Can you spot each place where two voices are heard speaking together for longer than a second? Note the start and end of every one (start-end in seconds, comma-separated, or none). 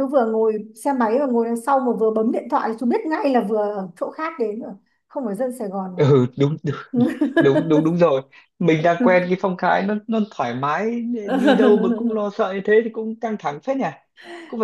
none